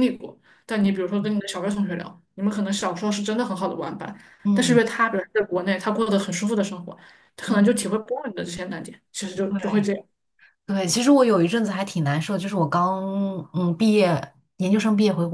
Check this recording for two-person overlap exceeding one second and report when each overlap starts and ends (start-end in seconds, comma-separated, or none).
none